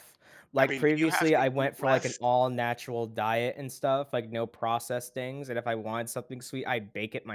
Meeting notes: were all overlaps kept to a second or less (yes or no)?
no